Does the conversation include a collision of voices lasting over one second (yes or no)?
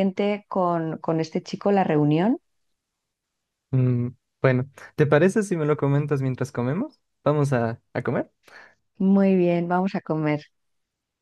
no